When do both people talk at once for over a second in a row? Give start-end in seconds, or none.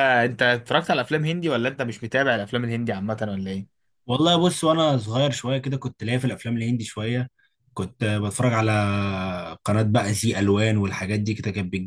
none